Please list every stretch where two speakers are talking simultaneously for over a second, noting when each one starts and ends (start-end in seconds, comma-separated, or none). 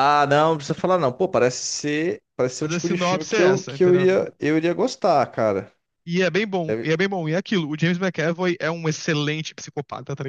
2.6-4.1